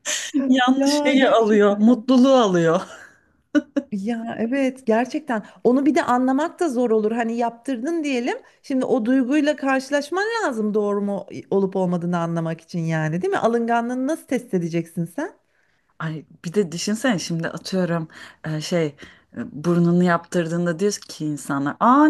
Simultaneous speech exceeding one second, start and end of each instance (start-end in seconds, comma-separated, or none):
0.8-2.0